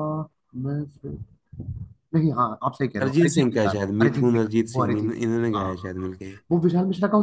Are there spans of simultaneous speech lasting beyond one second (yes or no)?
yes